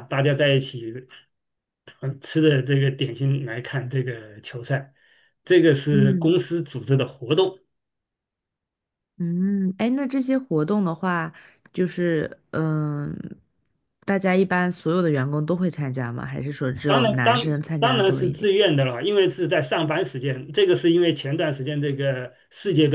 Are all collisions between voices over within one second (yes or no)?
no